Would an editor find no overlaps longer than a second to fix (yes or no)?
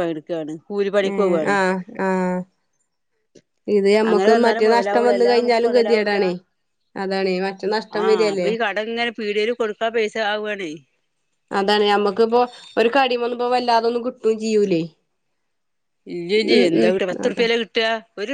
no